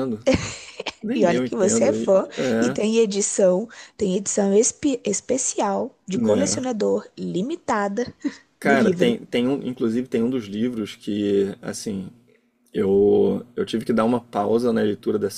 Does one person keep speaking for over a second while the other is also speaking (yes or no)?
yes